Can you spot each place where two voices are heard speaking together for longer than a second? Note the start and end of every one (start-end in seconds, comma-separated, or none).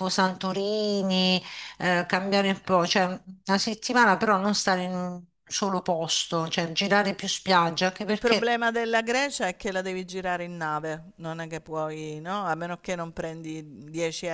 none